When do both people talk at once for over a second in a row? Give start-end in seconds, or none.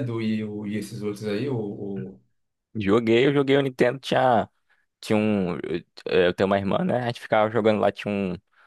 none